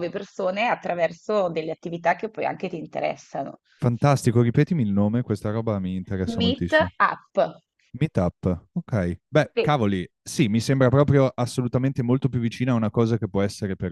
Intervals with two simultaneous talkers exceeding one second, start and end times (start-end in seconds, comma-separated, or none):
none